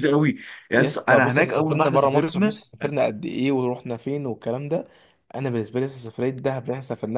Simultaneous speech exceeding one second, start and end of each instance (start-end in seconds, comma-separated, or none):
0.7-2.6